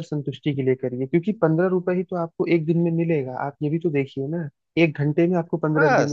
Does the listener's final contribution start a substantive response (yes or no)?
no